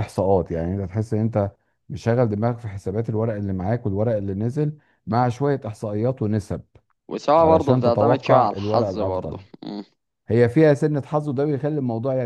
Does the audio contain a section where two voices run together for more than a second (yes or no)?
yes